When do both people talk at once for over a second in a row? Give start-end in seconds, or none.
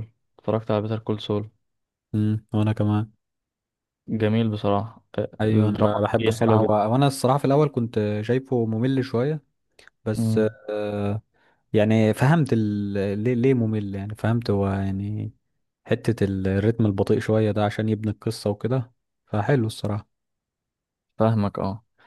5.4-6.8